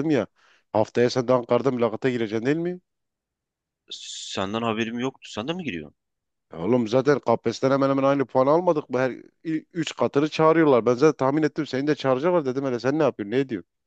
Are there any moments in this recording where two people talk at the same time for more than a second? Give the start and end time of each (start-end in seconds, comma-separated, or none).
none